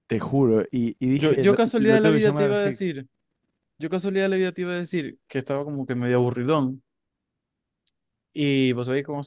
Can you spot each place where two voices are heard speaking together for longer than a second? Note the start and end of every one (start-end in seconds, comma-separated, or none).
1.1-2.9